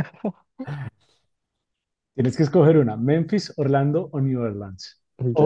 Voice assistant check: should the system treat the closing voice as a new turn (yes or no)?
yes